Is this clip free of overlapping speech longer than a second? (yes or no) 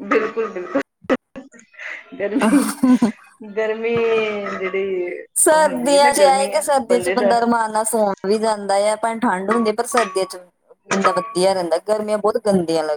yes